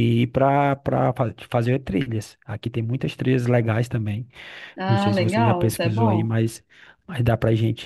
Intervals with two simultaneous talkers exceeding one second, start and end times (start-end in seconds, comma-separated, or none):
4.9-6.3